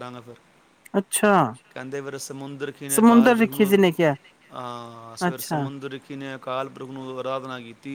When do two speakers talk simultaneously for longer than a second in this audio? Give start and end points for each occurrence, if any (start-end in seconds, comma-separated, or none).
3.0-4.2